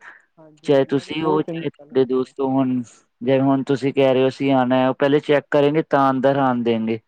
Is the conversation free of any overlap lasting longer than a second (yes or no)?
no